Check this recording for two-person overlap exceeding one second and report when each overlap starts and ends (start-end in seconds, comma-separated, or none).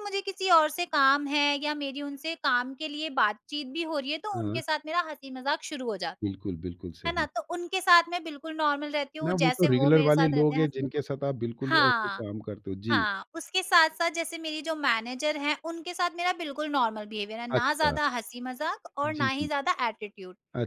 9.2-11.0